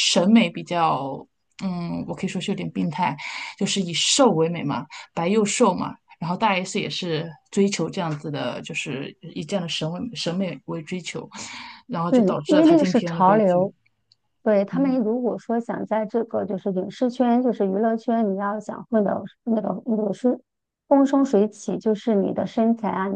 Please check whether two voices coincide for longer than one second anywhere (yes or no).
yes